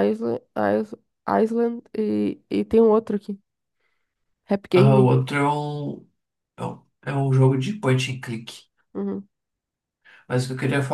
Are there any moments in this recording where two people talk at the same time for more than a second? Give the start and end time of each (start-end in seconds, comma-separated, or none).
none